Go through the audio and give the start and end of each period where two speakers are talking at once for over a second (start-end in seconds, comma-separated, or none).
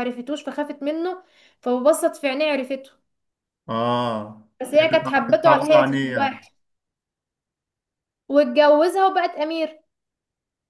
4.6-6.5